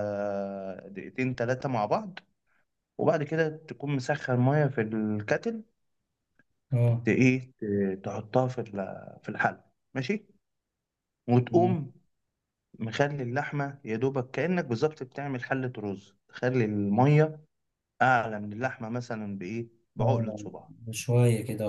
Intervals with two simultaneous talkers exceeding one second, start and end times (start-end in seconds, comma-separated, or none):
none